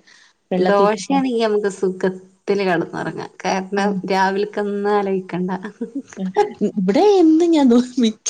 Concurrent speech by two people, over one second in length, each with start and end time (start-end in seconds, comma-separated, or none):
none